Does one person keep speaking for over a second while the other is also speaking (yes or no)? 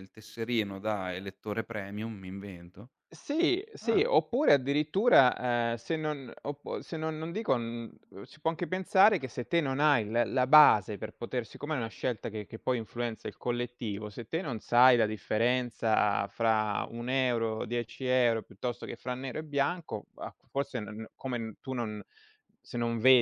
no